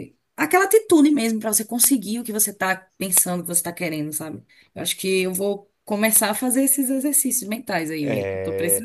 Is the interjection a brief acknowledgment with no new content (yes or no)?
no